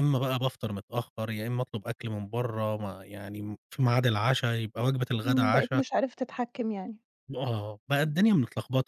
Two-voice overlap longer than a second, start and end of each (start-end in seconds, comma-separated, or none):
none